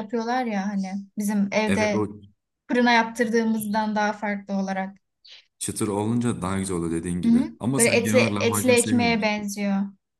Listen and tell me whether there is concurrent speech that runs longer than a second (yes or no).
yes